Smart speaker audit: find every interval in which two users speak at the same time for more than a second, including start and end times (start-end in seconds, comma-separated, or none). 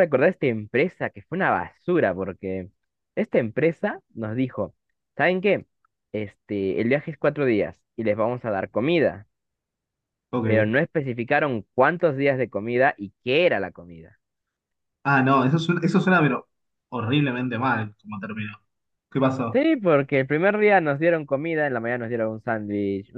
none